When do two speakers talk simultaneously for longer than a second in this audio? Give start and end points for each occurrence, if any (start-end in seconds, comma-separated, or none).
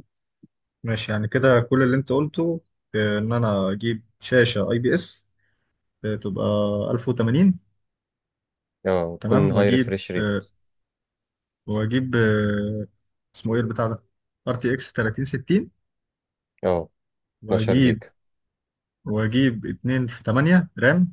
9.2-10.4